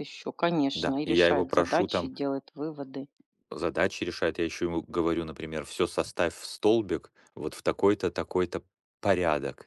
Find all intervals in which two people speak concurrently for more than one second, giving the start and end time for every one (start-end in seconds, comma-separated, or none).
0.7-2.1